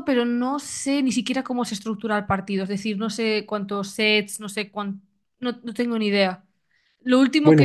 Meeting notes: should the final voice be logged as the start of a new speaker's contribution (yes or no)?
no